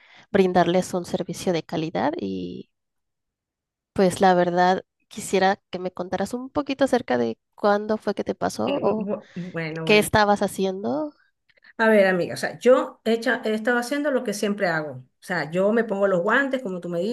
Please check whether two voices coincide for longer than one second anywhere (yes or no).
no